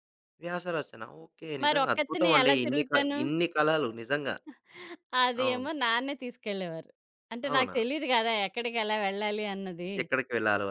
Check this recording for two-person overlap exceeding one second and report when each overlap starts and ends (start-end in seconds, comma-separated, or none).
1.6-3.2